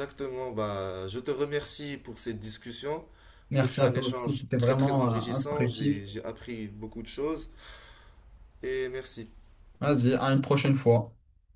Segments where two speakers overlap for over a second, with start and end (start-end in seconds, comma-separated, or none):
3.5-6.1